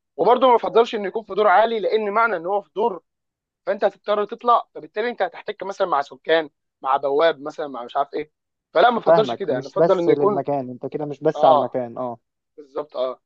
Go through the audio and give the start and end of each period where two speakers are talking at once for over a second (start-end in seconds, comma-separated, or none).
9.1-10.4